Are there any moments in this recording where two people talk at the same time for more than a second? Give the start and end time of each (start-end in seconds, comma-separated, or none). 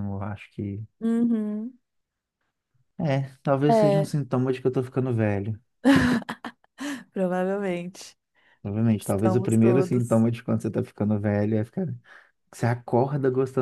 9.0-10.3